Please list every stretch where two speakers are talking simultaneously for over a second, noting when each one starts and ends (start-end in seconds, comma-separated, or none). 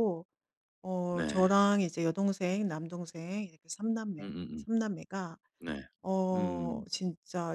none